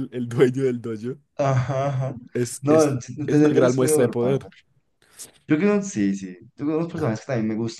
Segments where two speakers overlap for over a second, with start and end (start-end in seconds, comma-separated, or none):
2.6-4.4